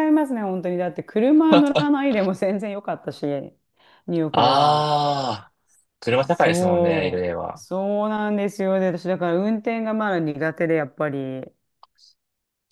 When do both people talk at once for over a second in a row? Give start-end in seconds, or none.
6.1-7.6